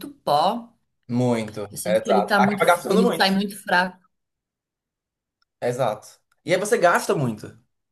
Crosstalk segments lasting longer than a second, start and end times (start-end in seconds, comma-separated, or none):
1.7-3.3